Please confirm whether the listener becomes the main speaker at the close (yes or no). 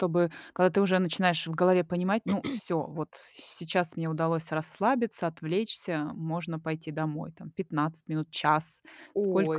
yes